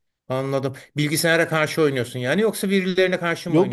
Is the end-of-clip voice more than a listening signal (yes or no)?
yes